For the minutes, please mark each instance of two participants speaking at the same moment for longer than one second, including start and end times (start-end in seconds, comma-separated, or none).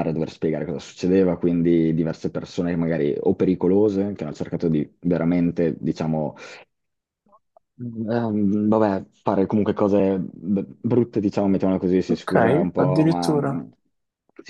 12.1-13.6